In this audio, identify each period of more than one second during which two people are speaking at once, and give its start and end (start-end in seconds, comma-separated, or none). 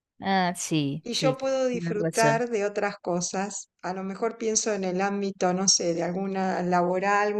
1.0-2.4